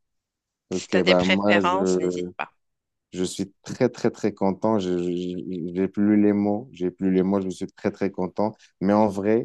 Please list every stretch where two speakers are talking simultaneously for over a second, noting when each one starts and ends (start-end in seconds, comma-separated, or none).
0.7-2.3